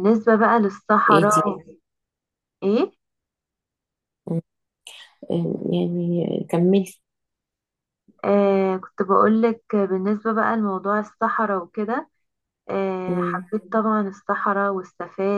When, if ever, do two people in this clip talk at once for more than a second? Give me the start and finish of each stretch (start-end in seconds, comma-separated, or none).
none